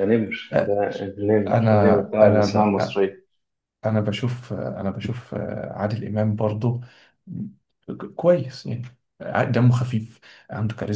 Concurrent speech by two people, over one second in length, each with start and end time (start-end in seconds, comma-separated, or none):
1.5-2.7